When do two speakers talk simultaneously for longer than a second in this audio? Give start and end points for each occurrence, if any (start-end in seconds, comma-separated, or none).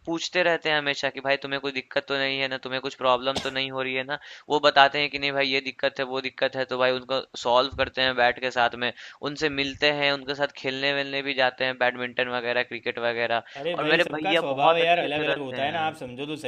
13.6-15.9